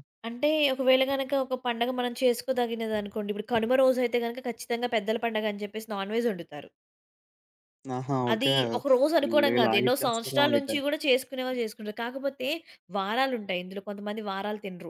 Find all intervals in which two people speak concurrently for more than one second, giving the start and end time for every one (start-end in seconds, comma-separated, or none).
9.2-10.7